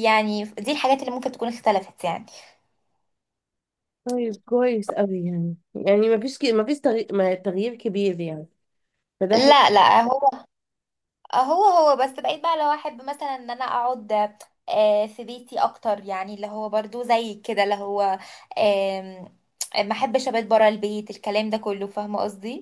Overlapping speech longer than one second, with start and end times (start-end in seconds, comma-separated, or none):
none